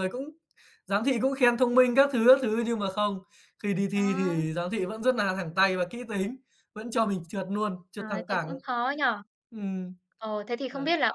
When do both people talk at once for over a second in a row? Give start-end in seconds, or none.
none